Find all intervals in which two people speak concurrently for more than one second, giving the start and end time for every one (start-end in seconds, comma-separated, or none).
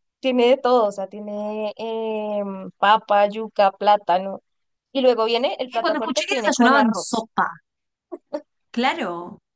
5.7-7.3